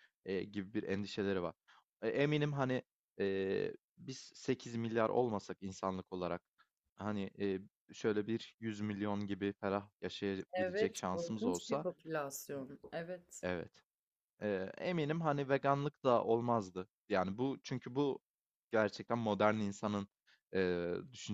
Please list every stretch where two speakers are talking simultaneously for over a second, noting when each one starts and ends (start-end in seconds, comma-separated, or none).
10.5-11.8